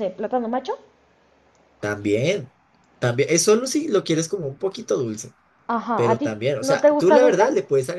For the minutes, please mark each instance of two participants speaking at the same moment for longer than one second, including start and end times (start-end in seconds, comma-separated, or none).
6.0-7.4